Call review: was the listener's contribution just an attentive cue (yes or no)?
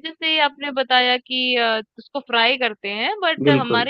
yes